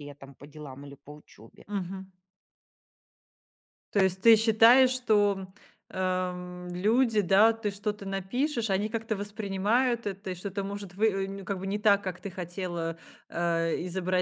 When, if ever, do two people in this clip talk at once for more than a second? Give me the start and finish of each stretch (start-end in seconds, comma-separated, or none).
none